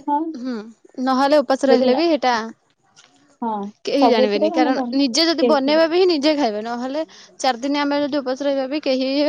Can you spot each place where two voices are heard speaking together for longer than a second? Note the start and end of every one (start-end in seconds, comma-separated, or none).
4.0-5.8